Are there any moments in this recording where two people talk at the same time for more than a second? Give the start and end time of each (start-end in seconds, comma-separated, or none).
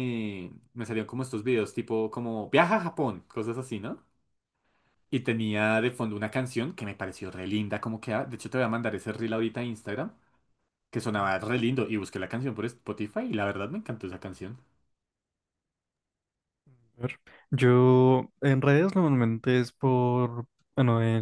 none